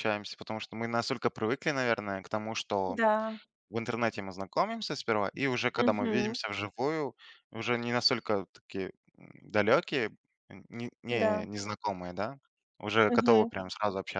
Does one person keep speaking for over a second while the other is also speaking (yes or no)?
no